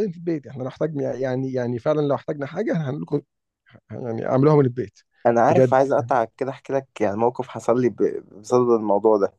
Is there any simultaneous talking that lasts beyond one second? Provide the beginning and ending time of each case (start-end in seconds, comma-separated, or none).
none